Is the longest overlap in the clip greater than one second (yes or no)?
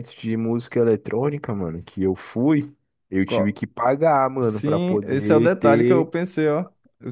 yes